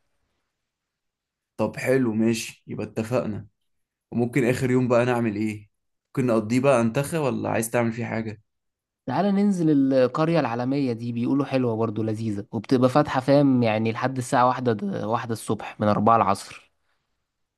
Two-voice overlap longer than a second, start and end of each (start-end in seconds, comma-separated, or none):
none